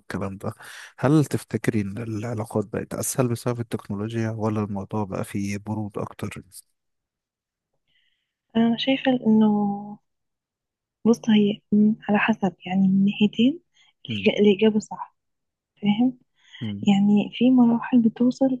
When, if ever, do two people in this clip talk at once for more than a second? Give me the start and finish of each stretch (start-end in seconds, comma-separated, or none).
none